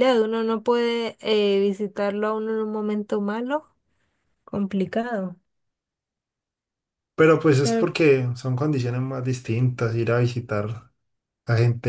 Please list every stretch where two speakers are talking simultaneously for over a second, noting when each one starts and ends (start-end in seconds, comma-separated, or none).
none